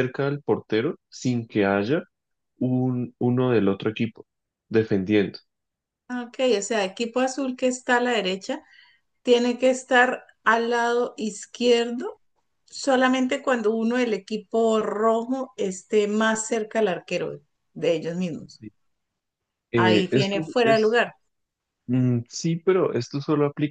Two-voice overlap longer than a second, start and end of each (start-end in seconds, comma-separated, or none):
19.8-21.0